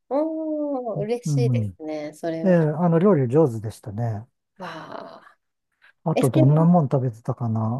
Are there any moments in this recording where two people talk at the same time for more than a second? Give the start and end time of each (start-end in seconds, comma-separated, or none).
none